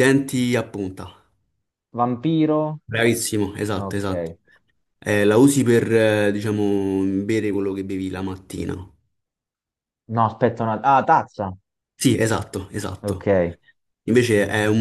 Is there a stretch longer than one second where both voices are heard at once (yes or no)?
no